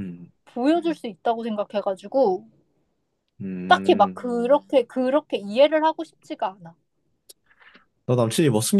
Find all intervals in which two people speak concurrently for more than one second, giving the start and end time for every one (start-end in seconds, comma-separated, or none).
none